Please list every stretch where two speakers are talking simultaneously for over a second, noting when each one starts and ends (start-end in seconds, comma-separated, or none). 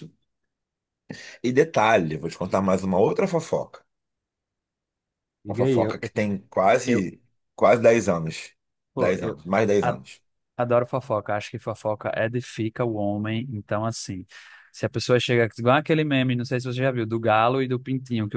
none